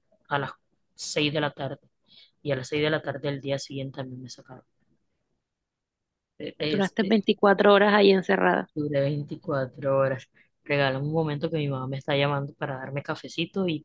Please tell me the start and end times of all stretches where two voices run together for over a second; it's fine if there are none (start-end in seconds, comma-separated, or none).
none